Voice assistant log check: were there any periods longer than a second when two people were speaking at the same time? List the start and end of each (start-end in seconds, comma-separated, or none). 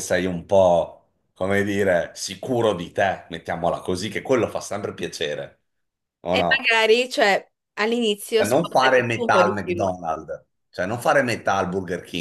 8.3-9.9